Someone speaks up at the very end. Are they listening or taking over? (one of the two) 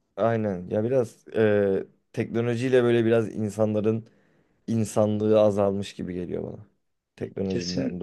taking over